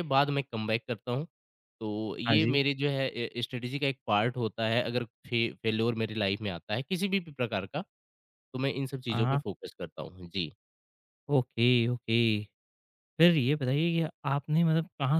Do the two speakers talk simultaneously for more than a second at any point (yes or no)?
no